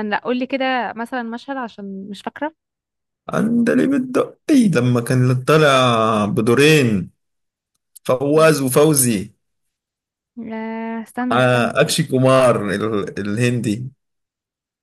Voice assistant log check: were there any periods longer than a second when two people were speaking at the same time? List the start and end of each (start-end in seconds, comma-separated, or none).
none